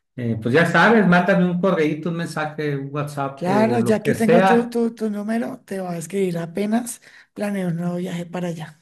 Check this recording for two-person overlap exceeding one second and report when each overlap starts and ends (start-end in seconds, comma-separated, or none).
3.3-4.8